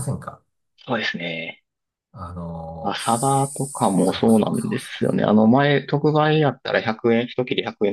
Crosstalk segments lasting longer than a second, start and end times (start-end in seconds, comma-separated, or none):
2.8-5.2